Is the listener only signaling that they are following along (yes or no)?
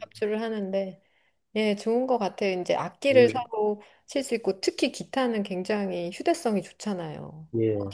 no